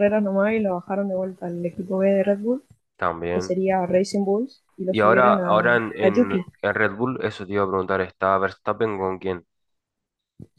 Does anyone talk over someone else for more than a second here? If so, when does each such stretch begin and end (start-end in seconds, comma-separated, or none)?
4.9-6.4